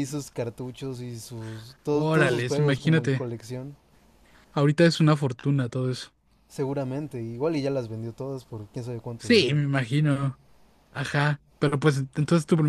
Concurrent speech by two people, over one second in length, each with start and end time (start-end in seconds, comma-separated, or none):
1.9-3.2